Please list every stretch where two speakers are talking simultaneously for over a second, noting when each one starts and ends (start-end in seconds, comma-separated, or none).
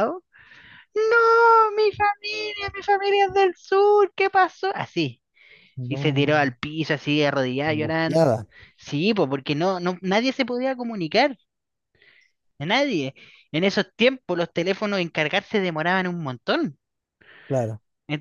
none